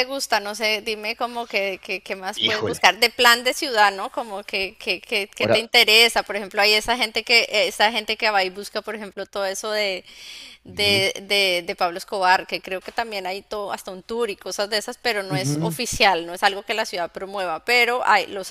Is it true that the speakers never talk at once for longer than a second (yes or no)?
yes